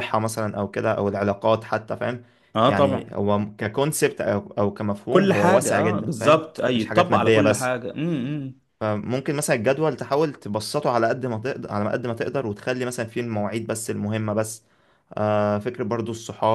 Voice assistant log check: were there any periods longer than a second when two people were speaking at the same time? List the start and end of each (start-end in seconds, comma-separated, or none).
5.1-7.7